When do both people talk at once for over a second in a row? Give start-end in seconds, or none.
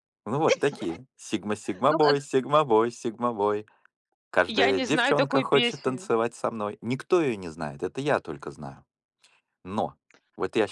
4.7-6.1